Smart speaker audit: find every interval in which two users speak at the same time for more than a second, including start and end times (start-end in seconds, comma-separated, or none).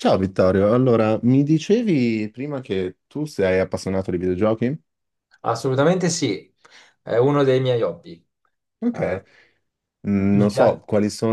none